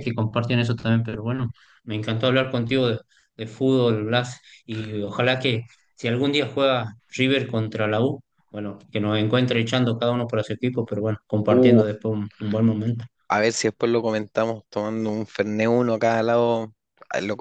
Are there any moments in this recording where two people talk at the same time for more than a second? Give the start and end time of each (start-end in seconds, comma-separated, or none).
none